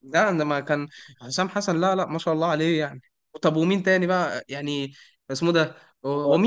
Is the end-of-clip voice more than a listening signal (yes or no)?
no